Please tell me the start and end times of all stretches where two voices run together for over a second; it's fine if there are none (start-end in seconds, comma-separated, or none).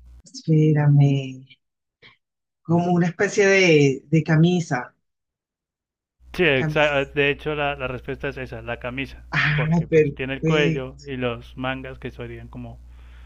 9.3-11.0